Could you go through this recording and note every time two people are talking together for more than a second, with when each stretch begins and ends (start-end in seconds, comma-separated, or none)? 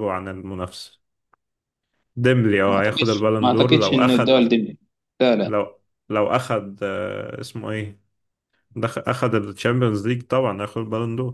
2.7-4.4